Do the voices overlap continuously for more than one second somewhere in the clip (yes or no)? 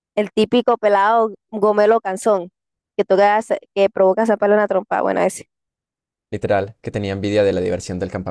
no